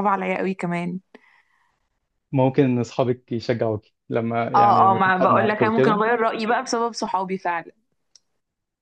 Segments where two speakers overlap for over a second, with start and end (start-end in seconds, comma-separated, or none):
4.5-6.0